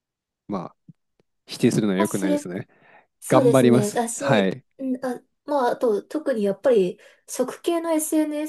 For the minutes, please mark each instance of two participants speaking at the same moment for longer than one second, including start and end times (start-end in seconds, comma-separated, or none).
3.3-4.6